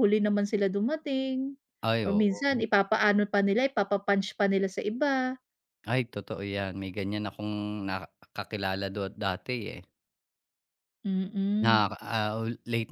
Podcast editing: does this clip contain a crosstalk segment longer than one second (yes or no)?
no